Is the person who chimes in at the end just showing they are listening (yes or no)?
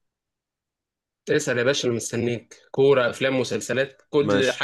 no